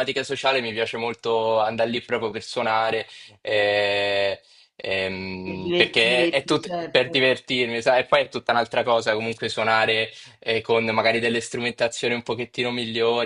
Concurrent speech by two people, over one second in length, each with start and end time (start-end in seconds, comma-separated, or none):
5.4-7.3